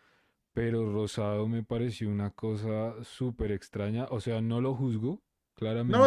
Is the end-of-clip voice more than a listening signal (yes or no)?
yes